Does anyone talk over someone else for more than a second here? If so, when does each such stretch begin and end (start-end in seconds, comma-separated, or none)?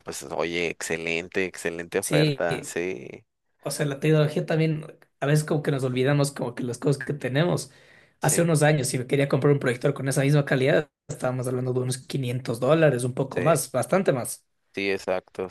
none